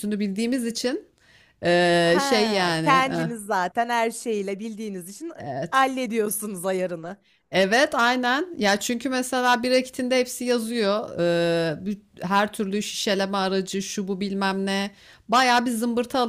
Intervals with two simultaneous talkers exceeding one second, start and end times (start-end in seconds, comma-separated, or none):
2.0-3.3